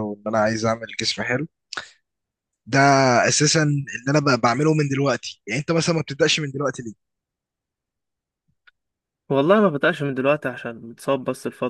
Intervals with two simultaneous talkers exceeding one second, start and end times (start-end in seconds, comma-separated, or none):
none